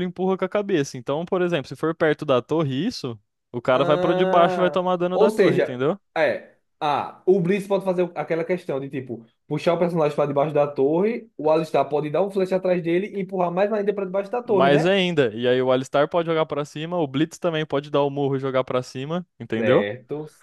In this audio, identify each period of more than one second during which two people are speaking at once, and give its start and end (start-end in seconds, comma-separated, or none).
3.7-5.8